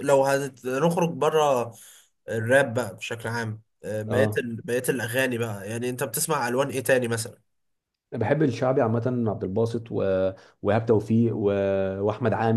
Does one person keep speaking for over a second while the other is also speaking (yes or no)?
no